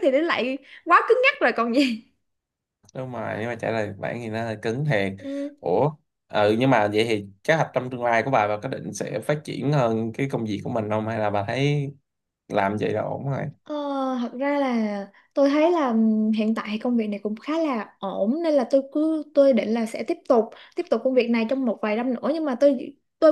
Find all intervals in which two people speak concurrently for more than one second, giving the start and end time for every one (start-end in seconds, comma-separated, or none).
none